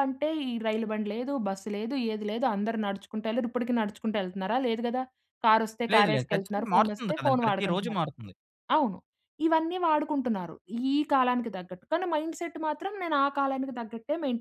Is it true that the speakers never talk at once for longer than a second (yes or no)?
no